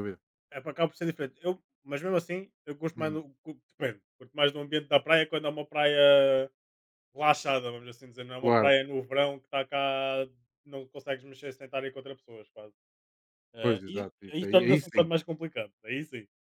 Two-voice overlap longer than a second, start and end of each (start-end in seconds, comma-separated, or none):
13.6-15.1